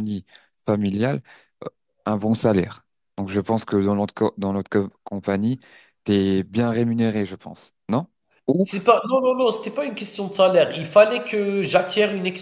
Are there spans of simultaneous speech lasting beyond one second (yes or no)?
no